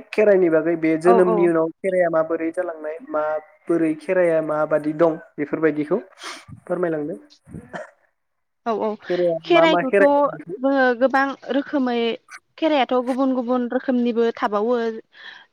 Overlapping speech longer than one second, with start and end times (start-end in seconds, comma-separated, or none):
none